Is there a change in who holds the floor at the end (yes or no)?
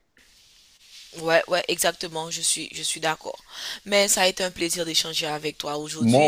no